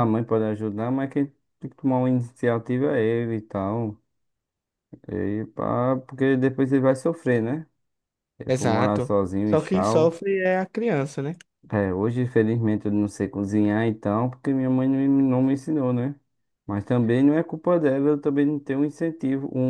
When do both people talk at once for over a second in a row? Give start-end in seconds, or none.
8.5-10.2